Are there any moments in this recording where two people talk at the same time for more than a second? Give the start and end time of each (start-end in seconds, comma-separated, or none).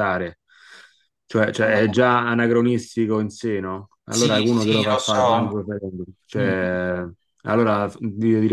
4.1-5.6